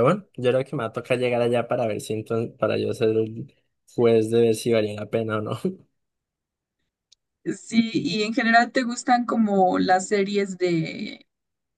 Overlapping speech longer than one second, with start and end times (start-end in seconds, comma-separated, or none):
none